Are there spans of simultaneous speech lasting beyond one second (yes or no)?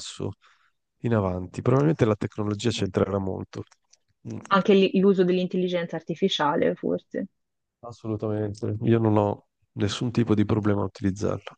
no